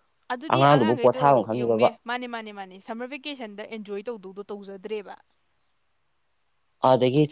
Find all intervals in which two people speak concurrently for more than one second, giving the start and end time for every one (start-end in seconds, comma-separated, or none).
0.6-1.9